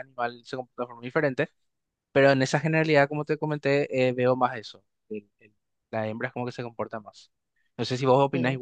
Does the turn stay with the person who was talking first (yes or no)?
no